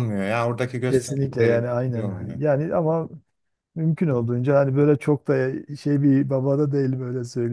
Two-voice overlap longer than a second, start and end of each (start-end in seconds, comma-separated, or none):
0.9-2.4